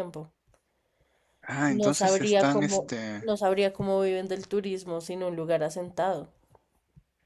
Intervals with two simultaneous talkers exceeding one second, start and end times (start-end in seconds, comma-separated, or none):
1.7-3.3